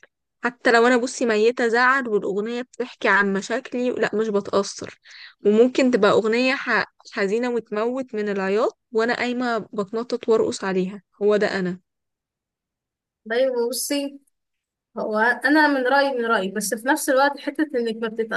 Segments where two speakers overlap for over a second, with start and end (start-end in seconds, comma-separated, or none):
none